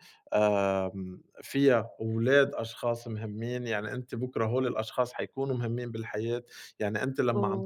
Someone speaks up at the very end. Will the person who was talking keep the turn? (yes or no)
yes